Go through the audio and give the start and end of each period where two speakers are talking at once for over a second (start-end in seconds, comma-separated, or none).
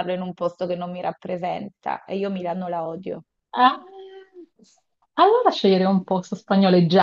none